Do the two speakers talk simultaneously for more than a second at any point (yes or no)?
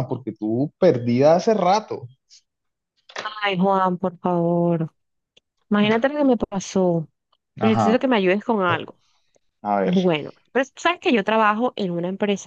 no